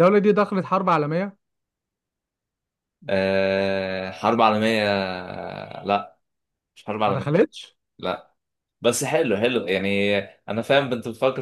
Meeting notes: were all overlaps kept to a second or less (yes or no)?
yes